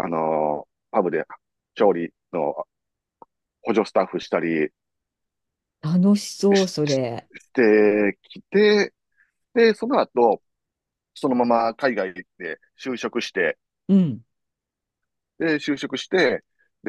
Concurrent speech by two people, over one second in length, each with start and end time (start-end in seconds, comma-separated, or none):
none